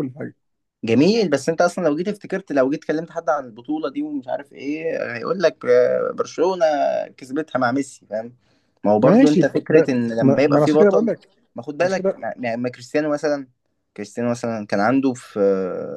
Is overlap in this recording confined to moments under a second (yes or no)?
no